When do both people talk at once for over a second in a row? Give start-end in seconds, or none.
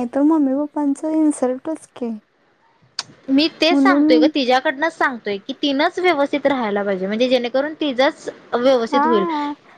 none